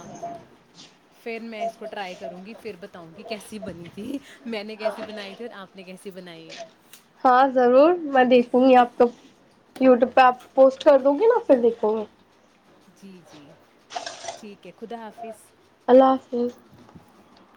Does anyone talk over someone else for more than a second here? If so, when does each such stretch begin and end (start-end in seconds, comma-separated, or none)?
none